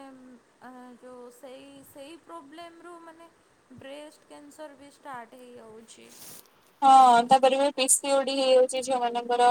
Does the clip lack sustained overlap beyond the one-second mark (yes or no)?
yes